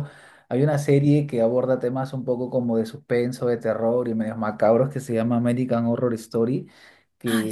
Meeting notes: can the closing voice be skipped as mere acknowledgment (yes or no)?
yes